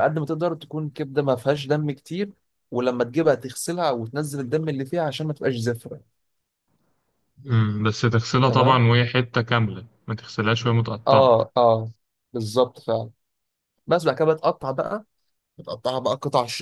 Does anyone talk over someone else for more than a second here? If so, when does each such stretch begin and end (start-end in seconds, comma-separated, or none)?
none